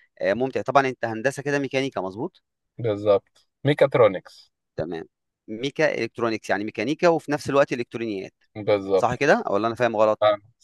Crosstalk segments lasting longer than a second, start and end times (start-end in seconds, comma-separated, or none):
none